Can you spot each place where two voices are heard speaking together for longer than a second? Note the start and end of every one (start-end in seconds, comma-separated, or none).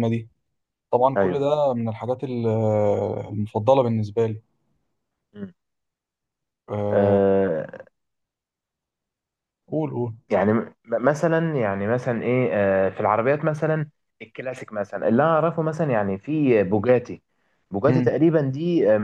none